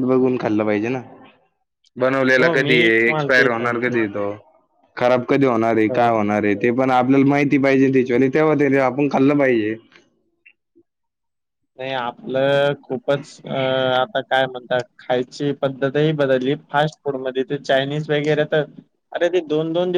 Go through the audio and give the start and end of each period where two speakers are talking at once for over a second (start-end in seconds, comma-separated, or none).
2.4-4.0